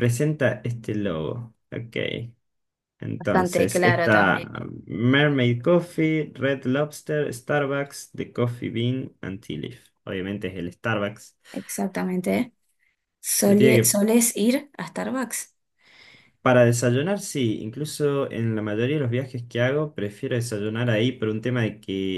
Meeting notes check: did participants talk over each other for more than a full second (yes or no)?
yes